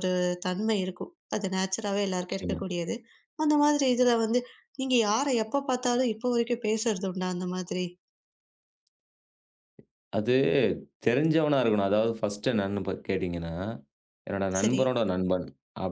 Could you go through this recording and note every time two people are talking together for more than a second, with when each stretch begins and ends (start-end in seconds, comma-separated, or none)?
none